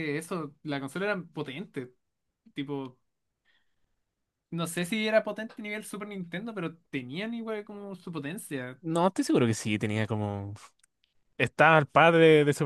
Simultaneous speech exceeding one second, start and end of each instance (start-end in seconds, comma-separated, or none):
none